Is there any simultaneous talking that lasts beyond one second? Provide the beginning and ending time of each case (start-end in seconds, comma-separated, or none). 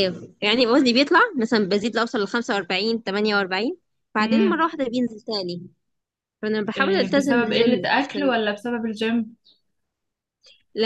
6.8-8.3